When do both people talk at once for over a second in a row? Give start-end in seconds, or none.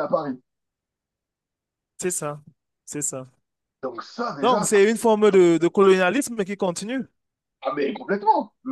none